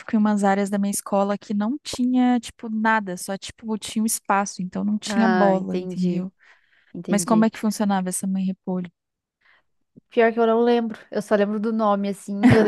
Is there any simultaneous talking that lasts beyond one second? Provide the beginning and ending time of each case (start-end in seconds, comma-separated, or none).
5.1-6.3